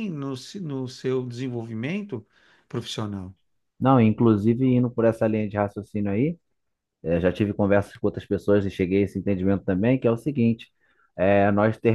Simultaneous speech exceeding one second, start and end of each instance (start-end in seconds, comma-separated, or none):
none